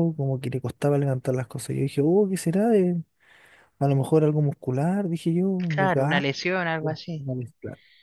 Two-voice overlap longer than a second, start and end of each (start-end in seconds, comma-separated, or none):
none